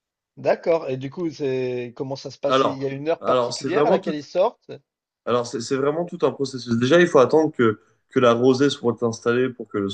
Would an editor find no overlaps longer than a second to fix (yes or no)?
no